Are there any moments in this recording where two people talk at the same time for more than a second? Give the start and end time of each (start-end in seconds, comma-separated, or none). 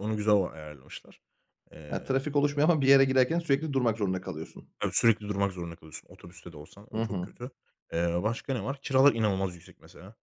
none